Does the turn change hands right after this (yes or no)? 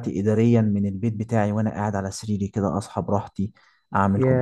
no